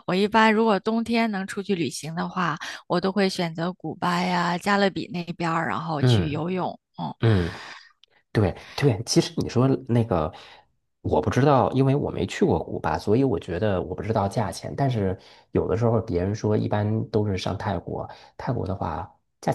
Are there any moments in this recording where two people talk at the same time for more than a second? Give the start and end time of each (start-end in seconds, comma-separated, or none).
none